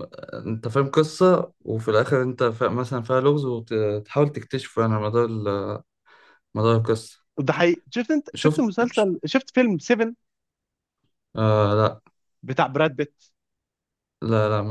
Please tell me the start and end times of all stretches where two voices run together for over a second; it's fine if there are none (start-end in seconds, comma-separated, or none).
none